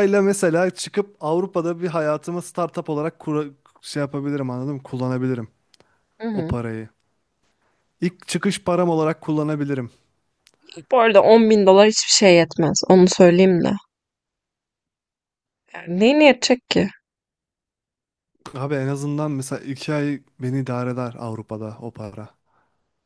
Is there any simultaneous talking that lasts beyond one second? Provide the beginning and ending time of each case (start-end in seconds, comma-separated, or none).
none